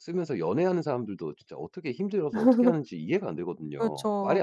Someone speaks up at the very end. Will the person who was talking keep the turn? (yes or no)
no